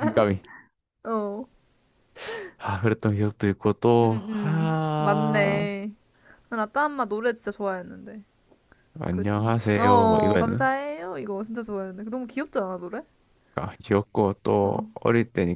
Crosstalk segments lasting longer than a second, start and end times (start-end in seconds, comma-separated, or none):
4.0-5.7, 9.1-10.7